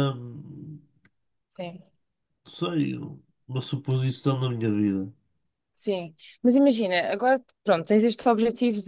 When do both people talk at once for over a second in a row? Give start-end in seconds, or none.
none